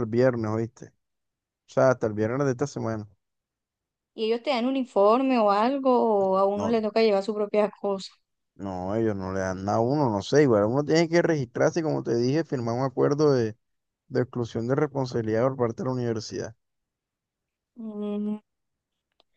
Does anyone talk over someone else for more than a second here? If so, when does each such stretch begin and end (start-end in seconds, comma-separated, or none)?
none